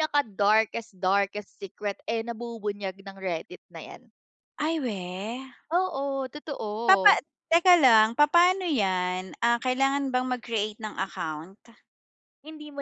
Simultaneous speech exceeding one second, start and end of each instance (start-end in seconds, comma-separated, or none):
none